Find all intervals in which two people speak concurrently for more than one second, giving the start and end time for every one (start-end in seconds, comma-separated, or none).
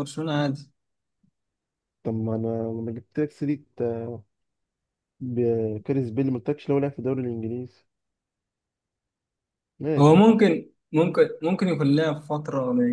none